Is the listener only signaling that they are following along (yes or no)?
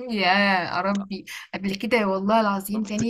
yes